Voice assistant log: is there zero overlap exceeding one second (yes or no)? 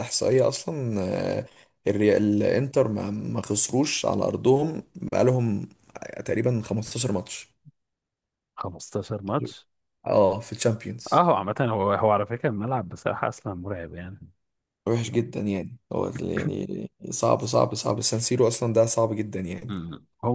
yes